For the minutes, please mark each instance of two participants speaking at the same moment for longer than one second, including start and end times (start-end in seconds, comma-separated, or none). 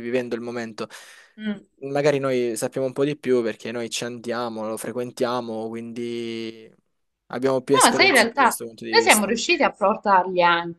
7.7-9.4